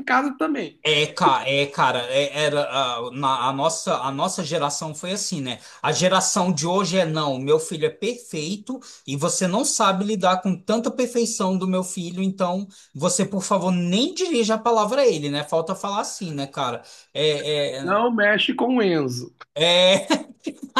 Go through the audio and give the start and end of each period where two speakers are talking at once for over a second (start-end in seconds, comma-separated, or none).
none